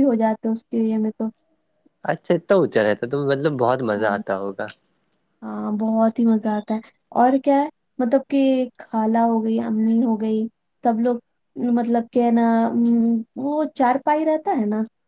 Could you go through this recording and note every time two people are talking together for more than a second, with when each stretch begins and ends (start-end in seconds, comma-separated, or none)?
none